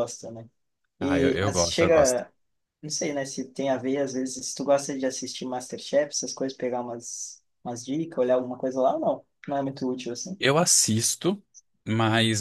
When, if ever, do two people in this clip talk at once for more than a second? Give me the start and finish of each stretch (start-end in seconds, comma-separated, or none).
1.0-2.2